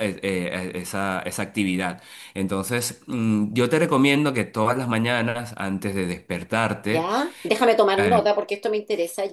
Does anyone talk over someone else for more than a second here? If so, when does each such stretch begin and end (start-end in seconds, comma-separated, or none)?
none